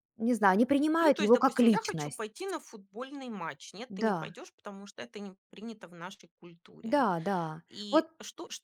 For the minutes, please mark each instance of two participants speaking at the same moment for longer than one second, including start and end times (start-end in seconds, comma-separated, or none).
1.0-2.2